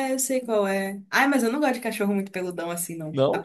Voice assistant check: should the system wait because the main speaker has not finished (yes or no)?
yes